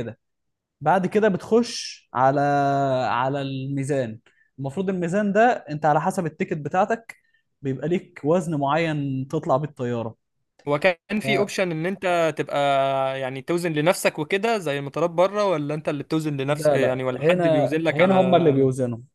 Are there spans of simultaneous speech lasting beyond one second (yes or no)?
yes